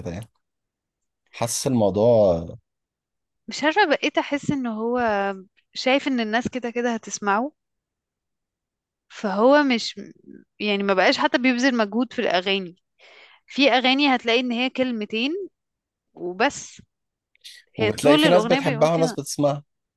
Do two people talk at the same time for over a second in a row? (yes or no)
yes